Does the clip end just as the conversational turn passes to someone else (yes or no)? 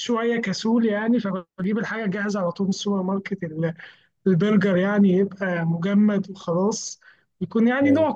no